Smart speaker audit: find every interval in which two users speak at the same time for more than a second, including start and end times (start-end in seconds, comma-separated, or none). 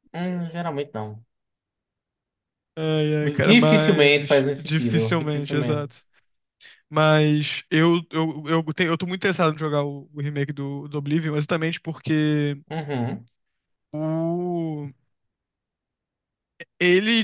3.4-6.0